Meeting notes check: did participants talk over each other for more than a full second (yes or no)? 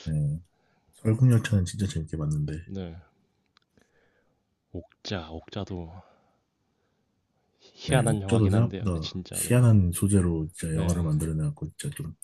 yes